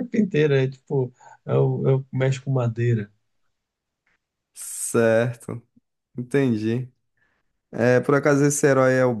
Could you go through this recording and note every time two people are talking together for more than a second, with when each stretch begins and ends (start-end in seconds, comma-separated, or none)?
none